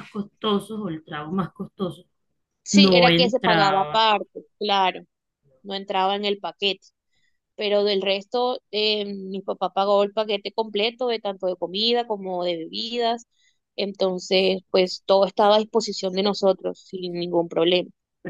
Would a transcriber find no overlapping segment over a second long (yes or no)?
no